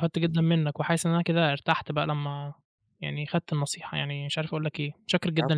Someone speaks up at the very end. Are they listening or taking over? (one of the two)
taking over